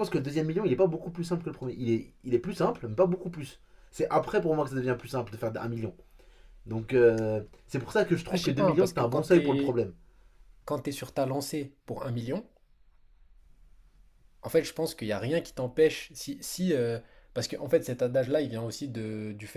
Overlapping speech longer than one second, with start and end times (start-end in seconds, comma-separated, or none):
8.3-9.8